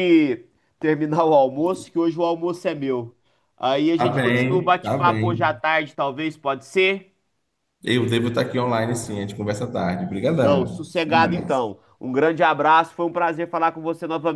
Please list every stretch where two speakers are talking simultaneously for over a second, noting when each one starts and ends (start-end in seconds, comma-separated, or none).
3.9-5.6, 10.4-11.7